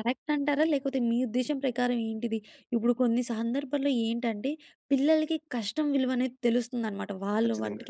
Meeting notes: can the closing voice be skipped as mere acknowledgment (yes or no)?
yes